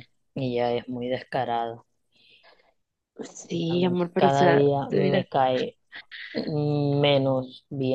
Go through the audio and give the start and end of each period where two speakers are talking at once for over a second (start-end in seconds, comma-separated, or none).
3.7-5.3